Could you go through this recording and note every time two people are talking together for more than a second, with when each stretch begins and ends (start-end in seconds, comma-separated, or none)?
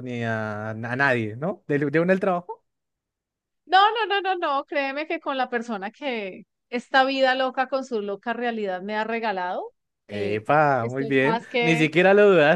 10.1-11.9